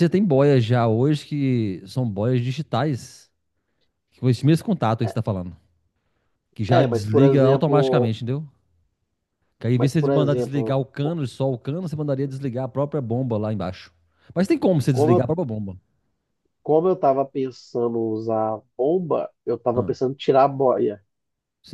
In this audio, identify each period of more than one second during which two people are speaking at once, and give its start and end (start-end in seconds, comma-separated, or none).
6.7-8.1, 9.8-11.2